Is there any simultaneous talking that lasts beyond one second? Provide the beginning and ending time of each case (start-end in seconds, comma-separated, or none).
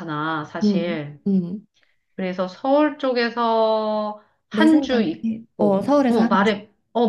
4.5-6.5